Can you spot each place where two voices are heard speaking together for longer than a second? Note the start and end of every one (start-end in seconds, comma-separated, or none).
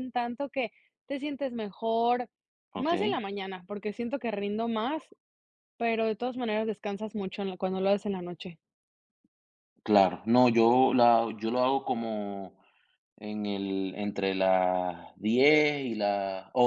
none